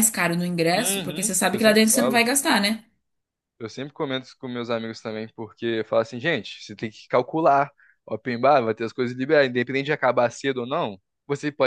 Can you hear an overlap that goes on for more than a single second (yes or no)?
yes